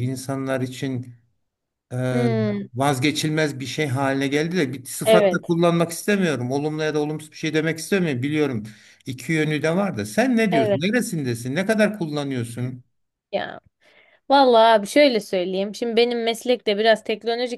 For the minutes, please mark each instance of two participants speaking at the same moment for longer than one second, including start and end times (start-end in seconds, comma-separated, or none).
none